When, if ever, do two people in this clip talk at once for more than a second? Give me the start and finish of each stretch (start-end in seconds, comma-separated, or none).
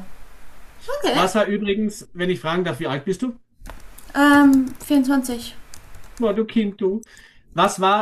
none